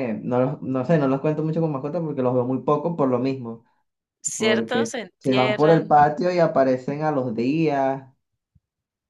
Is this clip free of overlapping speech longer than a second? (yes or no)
no